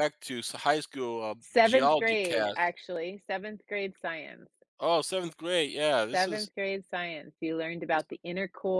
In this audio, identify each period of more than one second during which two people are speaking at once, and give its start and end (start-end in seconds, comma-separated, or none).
1.4-2.7